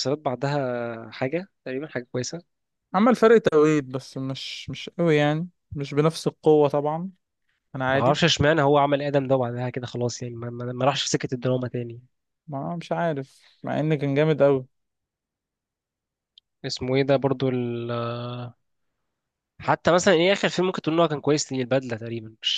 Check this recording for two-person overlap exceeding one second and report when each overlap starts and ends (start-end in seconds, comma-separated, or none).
none